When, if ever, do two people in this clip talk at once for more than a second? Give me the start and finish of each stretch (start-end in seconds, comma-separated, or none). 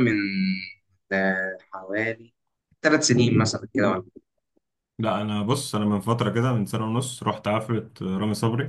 none